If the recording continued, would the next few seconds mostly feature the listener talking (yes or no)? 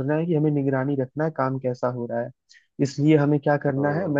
no